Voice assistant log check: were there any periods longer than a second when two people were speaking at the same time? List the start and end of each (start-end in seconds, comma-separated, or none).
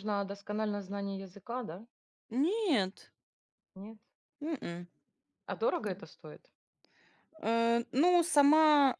none